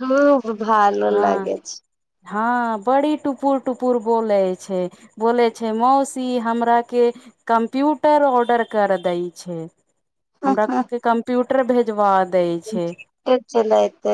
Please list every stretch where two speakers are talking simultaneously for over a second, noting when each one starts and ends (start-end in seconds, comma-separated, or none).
none